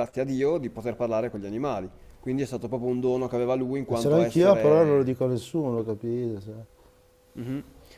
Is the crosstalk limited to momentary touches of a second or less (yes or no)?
no